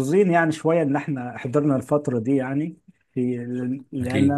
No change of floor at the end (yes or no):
yes